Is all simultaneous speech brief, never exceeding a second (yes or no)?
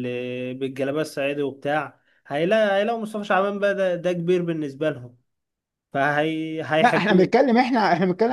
yes